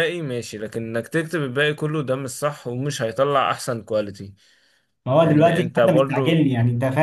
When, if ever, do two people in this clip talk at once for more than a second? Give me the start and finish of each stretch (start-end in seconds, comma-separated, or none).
5.2-6.5